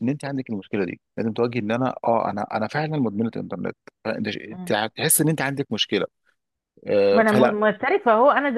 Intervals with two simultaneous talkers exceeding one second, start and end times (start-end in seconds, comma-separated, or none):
none